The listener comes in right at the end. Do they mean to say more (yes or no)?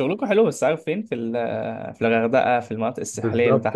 yes